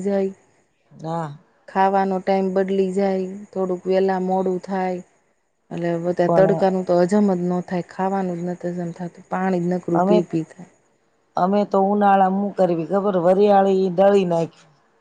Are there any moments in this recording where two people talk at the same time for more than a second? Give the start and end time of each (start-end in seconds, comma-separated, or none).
none